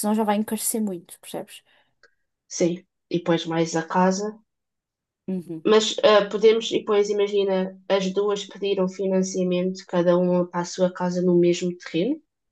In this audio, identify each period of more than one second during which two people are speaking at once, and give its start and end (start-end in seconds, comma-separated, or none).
none